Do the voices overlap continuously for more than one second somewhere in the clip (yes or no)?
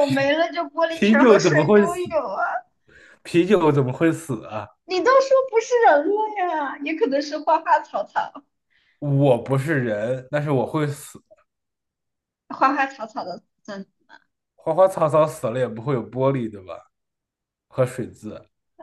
yes